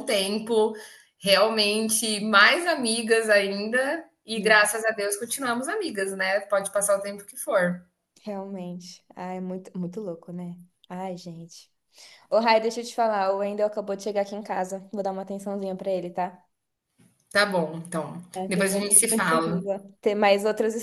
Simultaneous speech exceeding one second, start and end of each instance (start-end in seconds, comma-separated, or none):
18.3-19.6